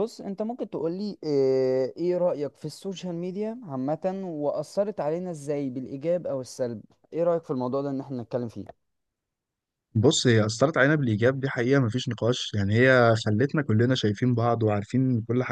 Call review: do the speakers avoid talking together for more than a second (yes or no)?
yes